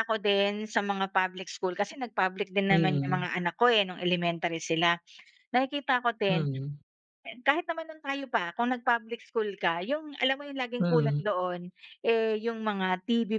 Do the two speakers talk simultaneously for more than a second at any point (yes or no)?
no